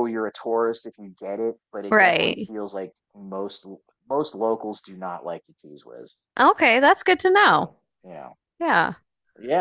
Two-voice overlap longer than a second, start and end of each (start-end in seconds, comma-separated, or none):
none